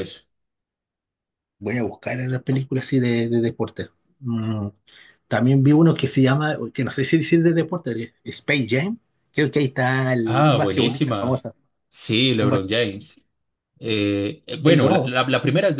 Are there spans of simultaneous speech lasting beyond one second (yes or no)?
yes